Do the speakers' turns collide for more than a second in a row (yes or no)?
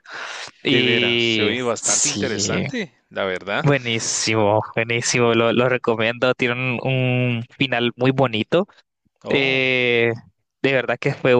yes